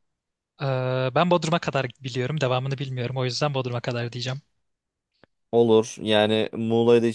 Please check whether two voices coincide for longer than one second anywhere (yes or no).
no